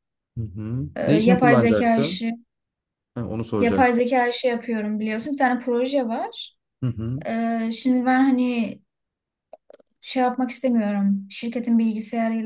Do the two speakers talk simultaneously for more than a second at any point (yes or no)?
yes